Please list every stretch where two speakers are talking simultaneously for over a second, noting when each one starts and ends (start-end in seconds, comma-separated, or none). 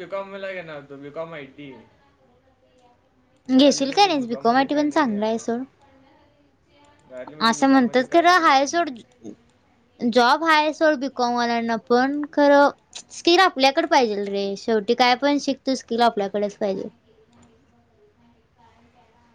3.6-5.4, 7.6-8.9